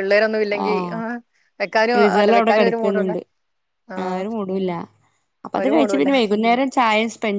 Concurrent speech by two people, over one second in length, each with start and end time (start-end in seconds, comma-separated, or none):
none